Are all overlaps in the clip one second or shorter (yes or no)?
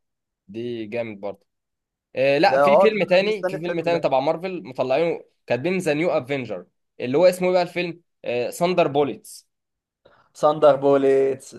no